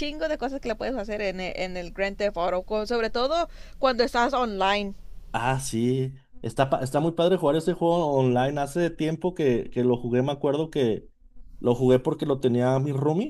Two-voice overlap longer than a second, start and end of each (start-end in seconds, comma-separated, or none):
none